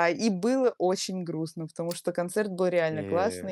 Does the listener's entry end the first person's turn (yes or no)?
no